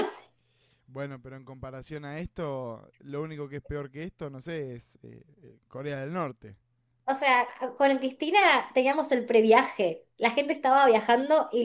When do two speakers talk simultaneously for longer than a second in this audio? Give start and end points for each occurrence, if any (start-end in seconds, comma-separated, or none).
none